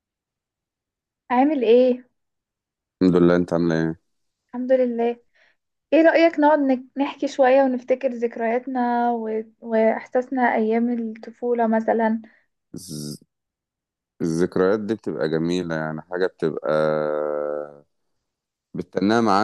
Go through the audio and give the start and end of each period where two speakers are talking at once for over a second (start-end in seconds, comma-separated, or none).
none